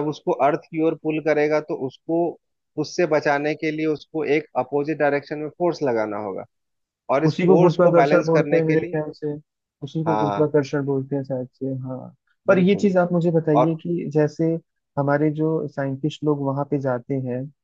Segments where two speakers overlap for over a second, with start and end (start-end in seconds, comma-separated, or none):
7.3-9.0